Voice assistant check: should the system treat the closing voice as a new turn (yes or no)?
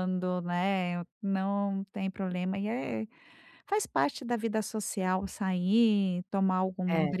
no